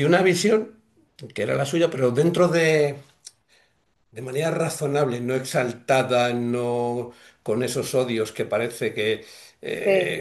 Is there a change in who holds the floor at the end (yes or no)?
no